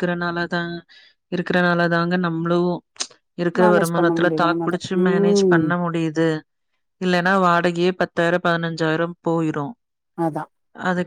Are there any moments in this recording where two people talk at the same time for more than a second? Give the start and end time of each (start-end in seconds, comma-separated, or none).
3.6-5.7